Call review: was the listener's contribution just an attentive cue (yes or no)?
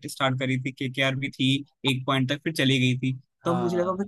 yes